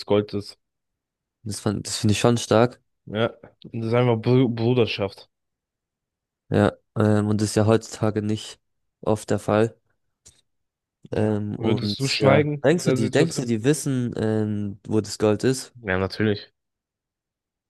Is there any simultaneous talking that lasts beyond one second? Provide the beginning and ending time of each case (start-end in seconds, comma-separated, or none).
11.1-13.5